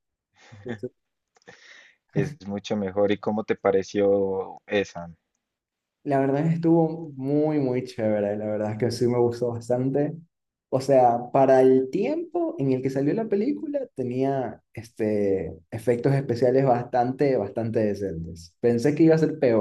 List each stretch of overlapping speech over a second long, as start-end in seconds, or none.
none